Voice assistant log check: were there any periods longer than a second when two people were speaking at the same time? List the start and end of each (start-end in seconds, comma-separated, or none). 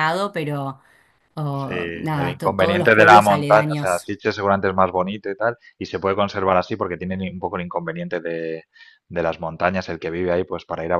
1.5-4.1